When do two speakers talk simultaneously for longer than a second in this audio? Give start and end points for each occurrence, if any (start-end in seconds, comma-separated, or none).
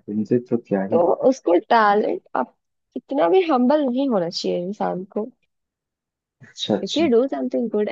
none